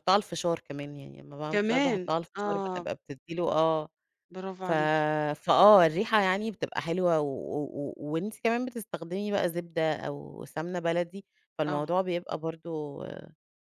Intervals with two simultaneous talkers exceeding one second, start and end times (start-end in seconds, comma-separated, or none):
1.5-2.9